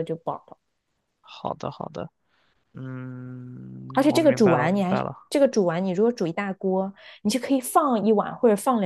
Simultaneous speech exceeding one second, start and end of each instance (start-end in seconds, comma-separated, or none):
3.9-5.2